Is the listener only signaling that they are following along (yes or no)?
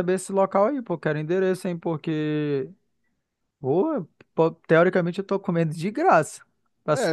no